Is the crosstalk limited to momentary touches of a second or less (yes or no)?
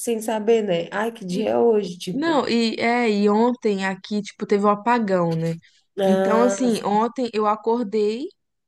yes